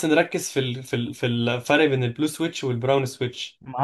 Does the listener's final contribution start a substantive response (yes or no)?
yes